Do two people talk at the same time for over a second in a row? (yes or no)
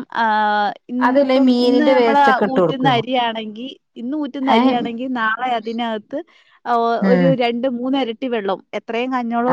yes